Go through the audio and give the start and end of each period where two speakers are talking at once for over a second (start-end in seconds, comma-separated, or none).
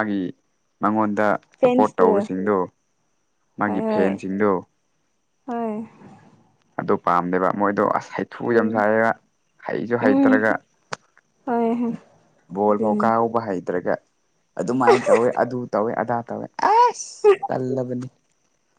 none